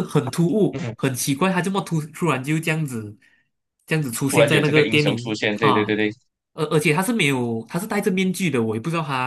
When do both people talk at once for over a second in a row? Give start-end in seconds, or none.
4.3-6.0